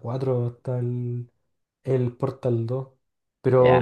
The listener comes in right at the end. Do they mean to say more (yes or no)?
no